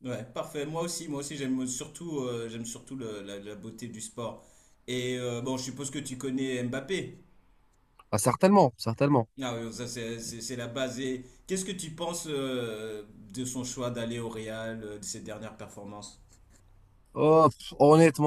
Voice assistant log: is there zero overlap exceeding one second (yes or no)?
yes